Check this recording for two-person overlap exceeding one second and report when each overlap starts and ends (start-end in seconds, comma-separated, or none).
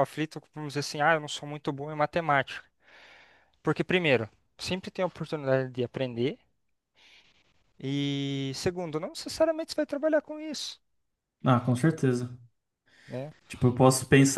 none